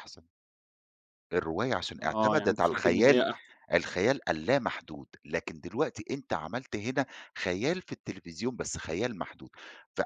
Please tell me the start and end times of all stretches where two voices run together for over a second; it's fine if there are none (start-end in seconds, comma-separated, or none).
2.0-3.2